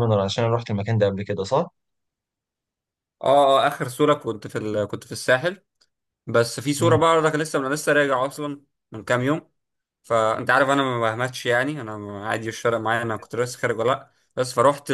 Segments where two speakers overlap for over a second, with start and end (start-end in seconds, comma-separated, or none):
none